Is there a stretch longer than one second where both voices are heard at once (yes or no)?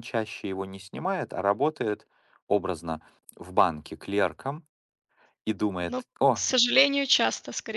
no